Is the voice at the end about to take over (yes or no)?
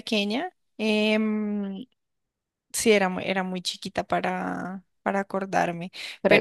no